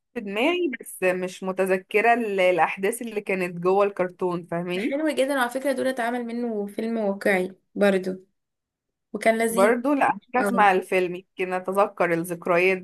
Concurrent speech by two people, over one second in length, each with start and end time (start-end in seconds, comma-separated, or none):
none